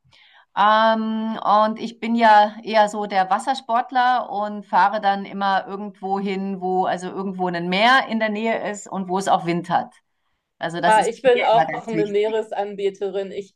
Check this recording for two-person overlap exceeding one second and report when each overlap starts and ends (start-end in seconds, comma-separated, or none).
10.8-12.4